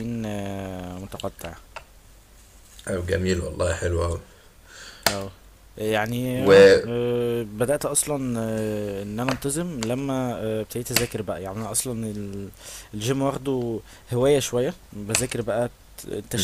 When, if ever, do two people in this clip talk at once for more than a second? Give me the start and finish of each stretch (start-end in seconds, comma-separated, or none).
none